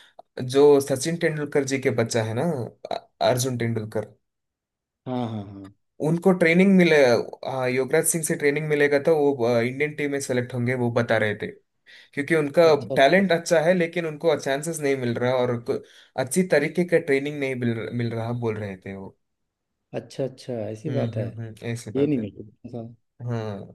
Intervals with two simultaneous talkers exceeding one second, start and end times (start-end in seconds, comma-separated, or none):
none